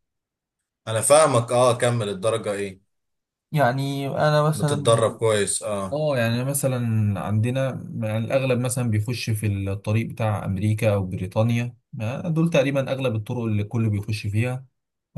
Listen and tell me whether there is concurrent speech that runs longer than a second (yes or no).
no